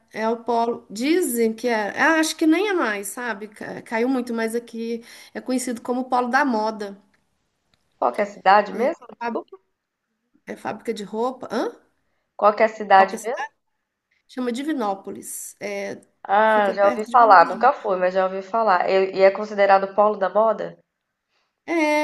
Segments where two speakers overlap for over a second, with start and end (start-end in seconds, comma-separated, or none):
16.5-17.9